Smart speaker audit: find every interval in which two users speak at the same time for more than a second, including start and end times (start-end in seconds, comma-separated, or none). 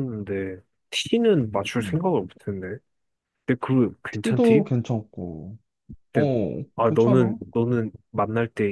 none